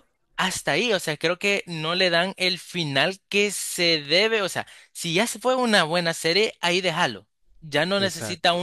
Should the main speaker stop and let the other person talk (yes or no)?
no